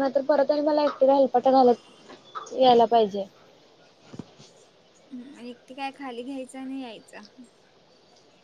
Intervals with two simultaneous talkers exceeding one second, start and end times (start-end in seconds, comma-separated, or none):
none